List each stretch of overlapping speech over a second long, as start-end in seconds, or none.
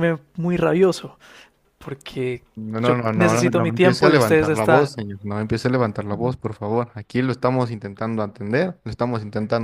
2.8-4.9